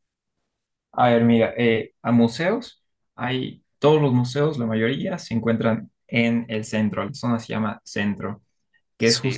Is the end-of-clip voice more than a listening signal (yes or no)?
no